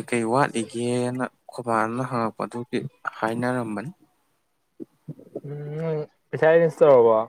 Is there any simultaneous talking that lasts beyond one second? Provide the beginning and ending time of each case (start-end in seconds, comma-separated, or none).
none